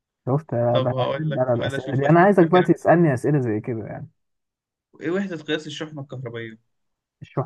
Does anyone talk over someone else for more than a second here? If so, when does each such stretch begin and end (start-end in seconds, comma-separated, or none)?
0.7-2.7